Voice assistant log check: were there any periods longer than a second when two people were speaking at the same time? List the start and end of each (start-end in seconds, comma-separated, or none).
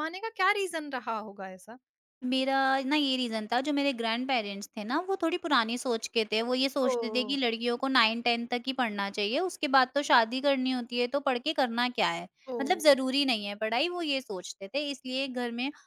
none